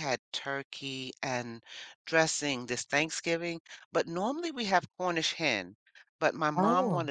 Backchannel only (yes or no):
yes